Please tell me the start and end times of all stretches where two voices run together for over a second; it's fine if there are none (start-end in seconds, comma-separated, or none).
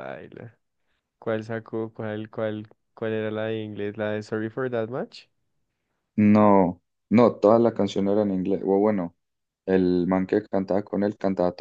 none